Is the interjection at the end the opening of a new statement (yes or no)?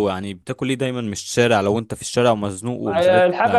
yes